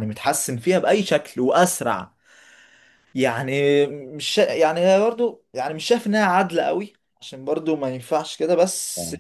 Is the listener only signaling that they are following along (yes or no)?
yes